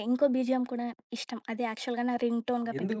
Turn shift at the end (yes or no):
yes